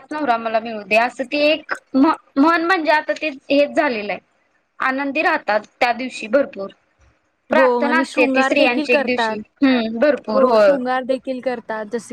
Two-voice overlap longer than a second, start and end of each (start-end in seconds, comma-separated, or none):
7.5-9.4